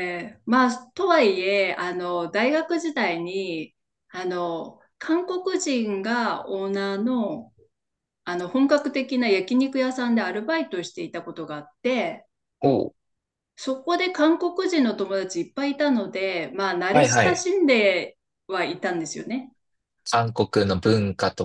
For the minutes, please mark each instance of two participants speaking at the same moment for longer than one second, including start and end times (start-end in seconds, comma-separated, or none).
none